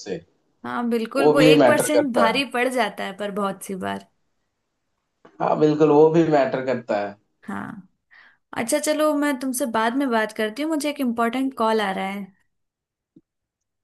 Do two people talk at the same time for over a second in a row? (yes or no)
yes